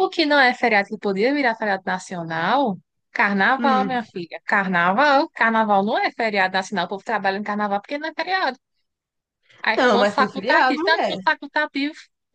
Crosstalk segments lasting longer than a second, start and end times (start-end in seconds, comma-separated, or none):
9.8-11.2